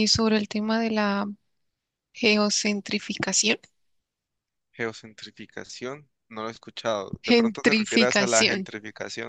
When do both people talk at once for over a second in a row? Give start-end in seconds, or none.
7.2-8.7